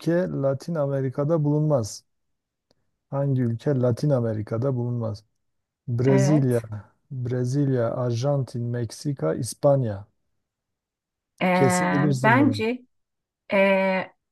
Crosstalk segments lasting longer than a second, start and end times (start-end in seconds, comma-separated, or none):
none